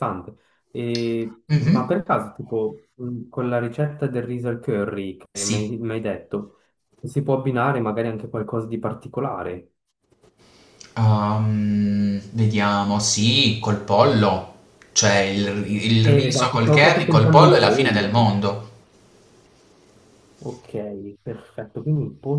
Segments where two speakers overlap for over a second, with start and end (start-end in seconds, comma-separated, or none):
16.0-18.2